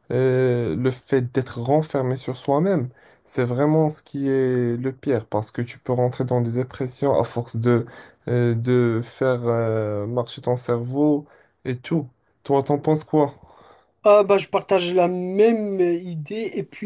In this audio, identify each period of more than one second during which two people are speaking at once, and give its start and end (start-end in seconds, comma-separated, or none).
none